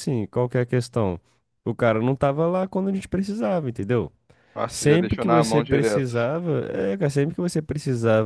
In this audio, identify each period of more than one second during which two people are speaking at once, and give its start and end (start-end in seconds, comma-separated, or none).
4.7-6.1